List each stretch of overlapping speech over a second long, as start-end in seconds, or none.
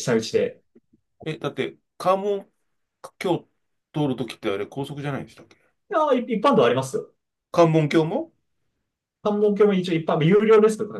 none